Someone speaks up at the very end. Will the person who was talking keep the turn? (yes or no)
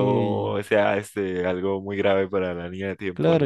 no